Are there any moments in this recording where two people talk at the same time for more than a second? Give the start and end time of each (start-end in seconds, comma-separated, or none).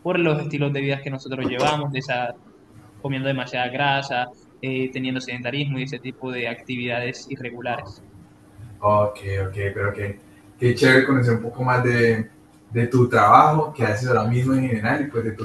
none